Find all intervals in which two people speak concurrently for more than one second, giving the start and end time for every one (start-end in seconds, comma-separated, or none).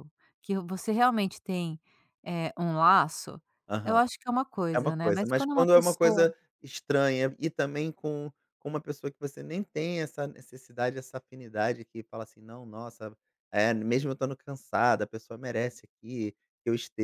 4.7-6.2